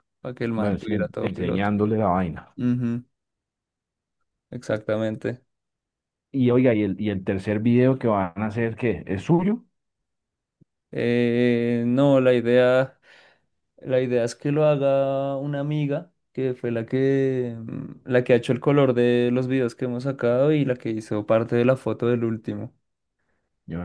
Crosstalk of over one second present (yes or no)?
yes